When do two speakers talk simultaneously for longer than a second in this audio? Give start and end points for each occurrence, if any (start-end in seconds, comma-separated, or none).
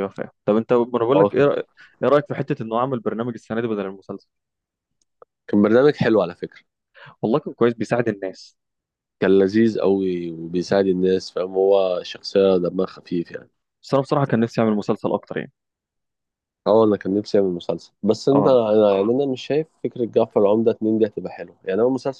none